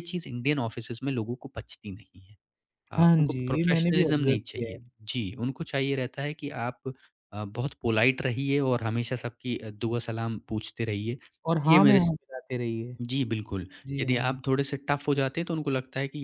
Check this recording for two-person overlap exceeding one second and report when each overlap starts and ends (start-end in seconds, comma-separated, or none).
3.0-4.8